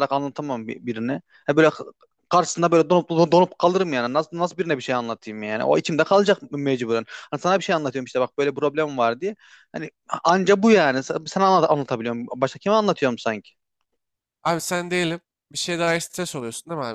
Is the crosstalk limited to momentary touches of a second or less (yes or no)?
yes